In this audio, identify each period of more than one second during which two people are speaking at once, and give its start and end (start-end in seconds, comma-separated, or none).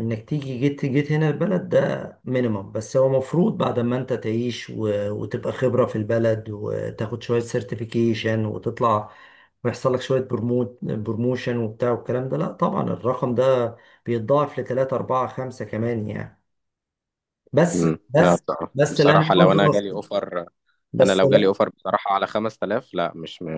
17.8-20.0